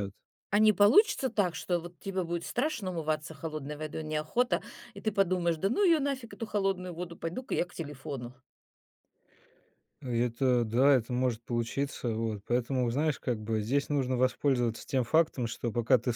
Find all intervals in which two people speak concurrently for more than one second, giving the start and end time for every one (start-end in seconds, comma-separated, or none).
none